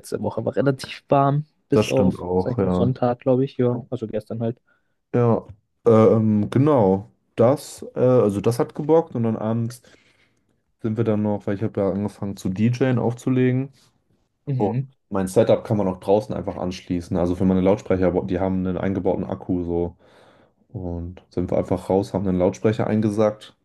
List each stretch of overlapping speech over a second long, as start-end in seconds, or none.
1.7-2.9